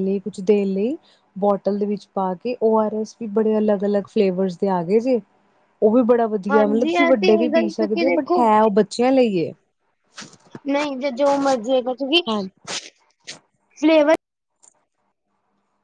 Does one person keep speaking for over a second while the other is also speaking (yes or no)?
yes